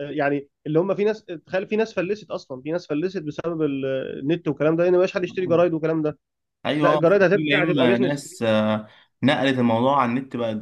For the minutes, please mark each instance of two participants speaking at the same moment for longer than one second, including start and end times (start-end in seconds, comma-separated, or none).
6.8-8.2